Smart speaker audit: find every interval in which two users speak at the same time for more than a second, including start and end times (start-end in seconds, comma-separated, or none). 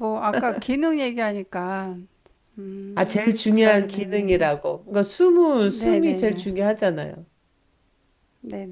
3.0-4.5